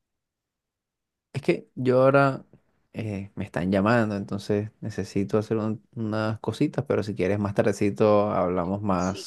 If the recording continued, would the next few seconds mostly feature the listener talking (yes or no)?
yes